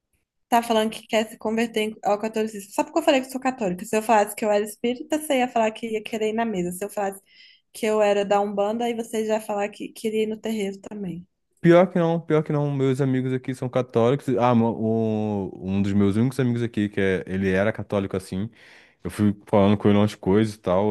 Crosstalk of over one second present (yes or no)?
no